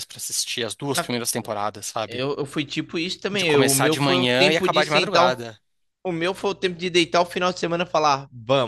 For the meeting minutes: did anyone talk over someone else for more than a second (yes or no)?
yes